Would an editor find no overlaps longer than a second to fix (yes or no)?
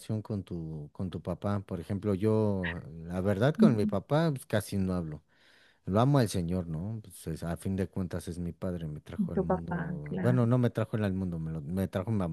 no